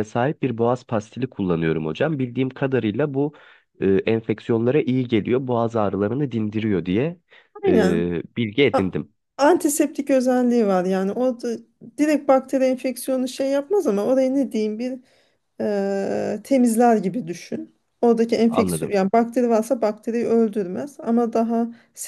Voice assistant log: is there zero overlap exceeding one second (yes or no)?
yes